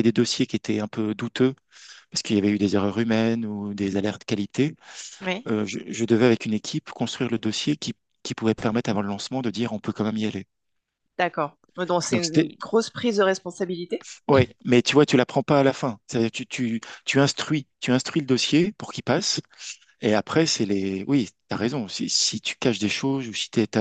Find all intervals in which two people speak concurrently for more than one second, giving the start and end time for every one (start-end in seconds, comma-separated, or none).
none